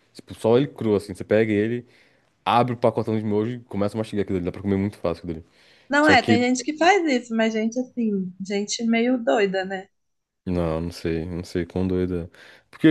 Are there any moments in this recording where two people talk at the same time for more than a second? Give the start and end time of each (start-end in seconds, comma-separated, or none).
none